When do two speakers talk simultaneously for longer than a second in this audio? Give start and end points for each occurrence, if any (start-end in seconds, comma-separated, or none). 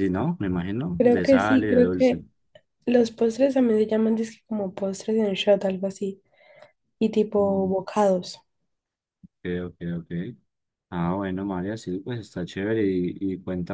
1.0-2.2